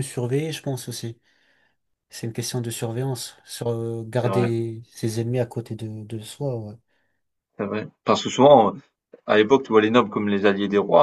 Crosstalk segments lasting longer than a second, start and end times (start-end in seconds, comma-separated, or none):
none